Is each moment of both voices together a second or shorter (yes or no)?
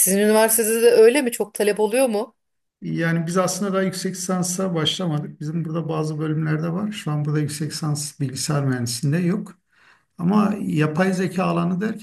yes